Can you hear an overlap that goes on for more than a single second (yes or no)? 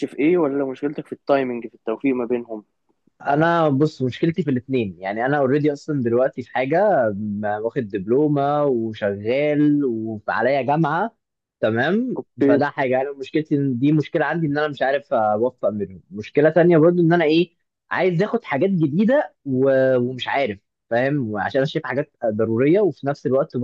no